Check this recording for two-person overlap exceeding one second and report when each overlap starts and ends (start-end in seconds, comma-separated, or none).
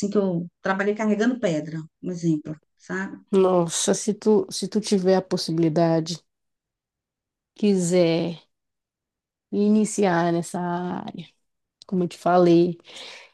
none